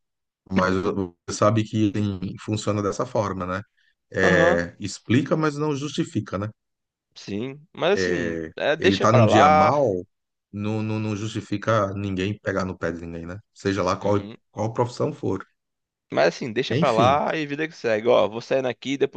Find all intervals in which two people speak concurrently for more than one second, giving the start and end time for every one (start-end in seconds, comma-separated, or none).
7.9-9.8